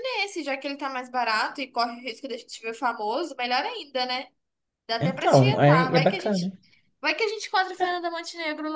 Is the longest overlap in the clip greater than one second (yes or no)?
yes